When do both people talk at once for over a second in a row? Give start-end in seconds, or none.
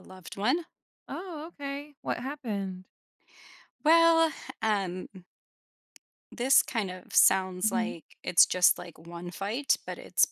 none